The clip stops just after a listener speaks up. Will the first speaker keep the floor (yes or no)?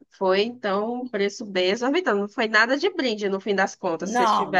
no